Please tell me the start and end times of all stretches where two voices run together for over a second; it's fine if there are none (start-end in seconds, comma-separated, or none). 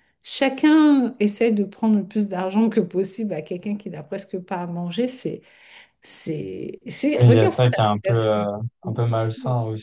7.2-8.4